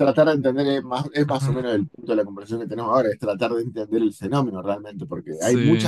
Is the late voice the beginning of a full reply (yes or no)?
no